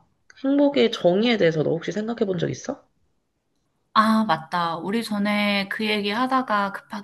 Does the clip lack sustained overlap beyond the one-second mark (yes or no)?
yes